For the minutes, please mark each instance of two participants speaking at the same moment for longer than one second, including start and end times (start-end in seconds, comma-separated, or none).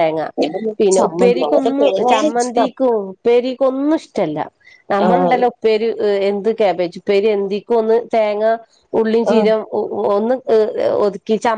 0.8-2.7